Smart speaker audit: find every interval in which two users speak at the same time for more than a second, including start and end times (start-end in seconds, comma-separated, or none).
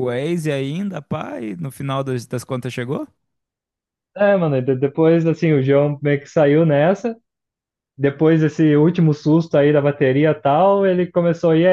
none